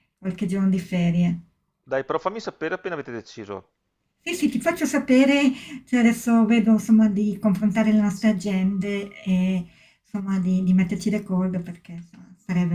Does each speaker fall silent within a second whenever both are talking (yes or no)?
yes